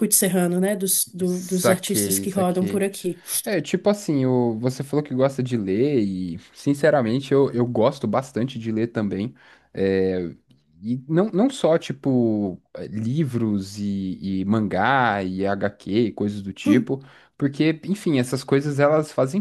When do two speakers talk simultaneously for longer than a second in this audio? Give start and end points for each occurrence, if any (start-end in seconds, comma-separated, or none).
1.2-2.9